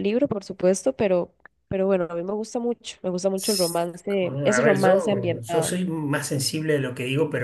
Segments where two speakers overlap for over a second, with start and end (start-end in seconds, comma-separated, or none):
4.1-5.8